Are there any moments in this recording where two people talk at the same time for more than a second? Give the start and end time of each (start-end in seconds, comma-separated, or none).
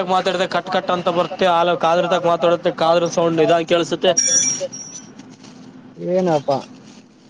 0.7-4.1